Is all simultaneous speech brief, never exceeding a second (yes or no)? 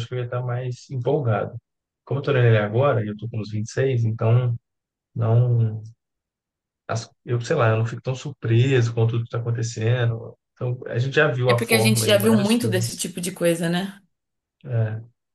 no